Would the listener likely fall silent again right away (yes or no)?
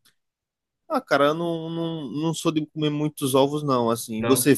yes